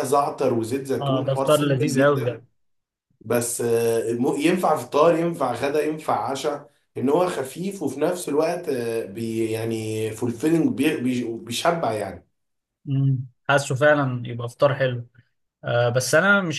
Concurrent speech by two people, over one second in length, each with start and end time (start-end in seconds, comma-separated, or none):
1.0-2.4